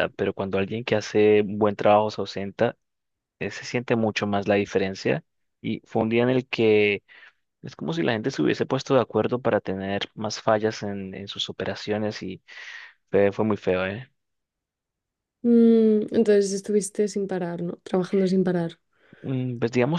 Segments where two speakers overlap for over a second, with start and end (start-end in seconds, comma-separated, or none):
none